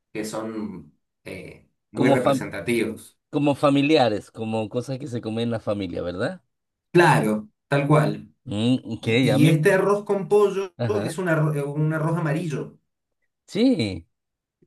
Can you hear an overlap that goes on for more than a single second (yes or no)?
no